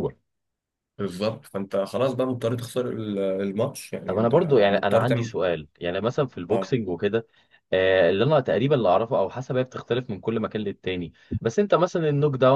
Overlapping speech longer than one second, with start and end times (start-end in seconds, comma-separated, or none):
4.1-5.4